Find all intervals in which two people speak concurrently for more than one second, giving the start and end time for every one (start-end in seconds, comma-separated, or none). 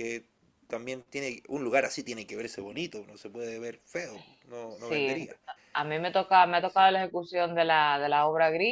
none